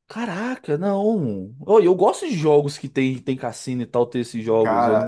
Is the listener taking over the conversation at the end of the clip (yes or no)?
yes